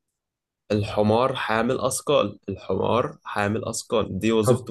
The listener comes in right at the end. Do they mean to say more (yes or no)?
yes